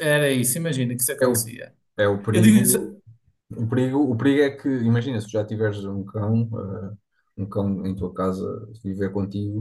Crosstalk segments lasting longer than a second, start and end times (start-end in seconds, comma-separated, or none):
none